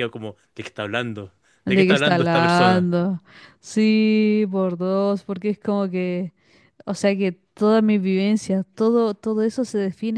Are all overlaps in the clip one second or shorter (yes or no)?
no